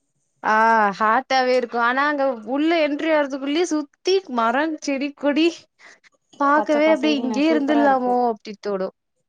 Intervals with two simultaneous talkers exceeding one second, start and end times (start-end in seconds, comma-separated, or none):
6.6-8.1